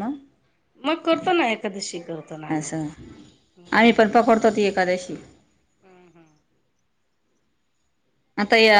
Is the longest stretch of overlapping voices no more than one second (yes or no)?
yes